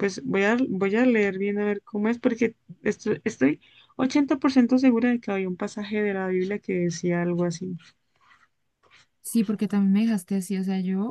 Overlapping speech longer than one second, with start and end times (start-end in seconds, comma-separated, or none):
none